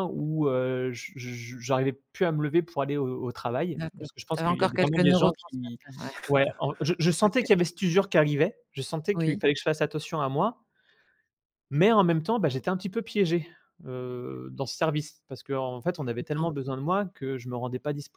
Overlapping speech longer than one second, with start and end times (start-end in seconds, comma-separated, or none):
3.8-5.8